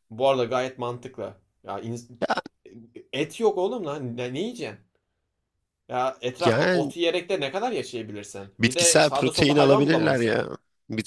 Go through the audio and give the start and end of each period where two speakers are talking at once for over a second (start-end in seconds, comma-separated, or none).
8.6-10.3